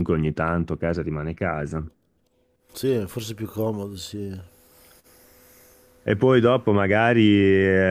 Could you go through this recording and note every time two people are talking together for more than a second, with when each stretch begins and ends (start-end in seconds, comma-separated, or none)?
none